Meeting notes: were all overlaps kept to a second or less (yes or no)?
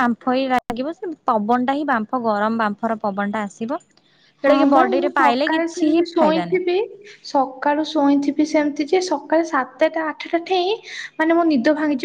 no